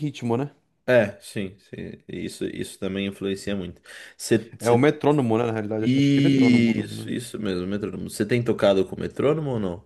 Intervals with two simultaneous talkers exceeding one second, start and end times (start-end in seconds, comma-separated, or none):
5.8-7.1